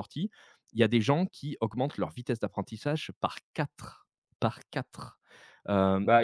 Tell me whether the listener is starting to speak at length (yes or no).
yes